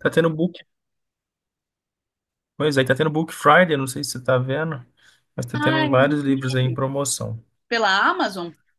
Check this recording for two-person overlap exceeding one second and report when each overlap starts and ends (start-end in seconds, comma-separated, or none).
5.5-6.8